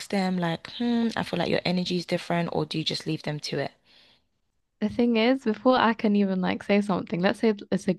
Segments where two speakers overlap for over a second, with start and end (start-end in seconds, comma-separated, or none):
none